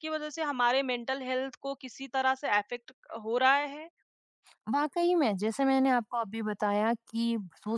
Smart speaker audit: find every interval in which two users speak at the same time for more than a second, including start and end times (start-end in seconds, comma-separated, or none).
none